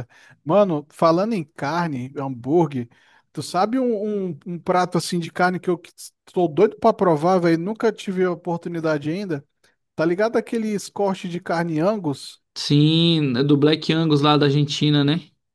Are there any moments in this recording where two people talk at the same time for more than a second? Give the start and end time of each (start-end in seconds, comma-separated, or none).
none